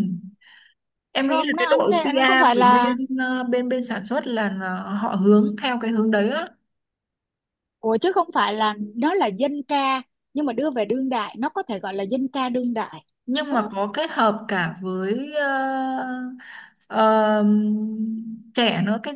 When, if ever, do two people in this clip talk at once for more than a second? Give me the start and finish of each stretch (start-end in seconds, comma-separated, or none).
1.3-2.9